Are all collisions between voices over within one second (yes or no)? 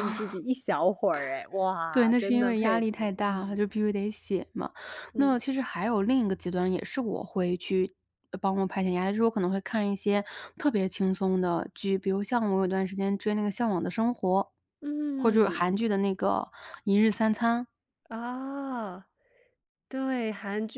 no